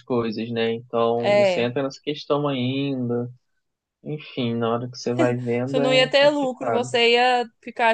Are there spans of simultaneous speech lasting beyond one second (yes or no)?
yes